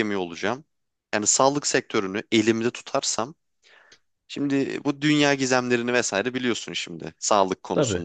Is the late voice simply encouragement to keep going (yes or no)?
yes